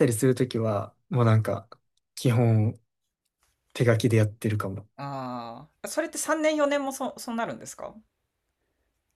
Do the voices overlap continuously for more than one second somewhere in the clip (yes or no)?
no